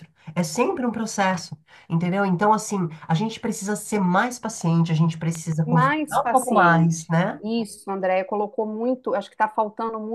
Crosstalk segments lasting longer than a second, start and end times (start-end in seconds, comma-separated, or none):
5.6-7.4